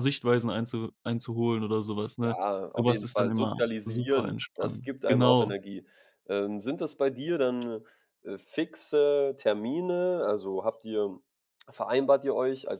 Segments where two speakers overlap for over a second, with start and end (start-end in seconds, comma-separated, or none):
2.2-5.5